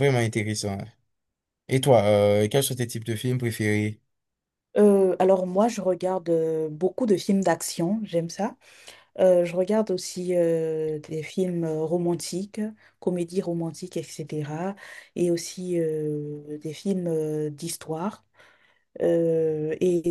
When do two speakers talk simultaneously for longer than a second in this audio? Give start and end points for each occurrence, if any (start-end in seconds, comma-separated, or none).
none